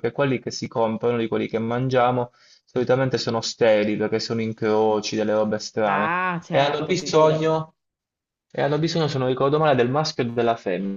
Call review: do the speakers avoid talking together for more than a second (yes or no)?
no